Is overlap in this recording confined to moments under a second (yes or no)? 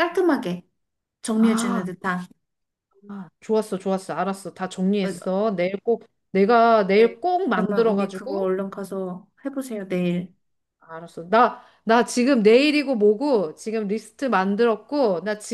no